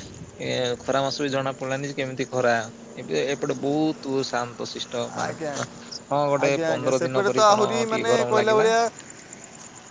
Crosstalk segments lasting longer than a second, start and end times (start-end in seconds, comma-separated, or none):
6.4-8.7